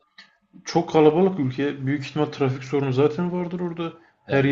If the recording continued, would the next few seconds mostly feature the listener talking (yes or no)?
no